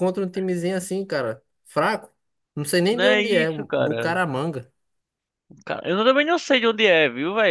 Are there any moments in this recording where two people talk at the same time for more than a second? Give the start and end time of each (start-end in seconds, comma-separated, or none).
2.9-4.1